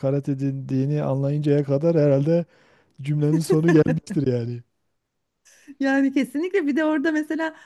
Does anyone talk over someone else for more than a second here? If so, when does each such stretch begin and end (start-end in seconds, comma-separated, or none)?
none